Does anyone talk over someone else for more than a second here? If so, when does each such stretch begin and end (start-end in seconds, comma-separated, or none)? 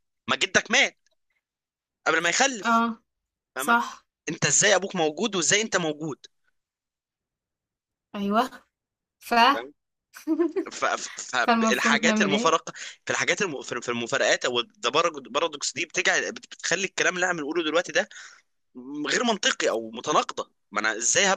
11.4-12.6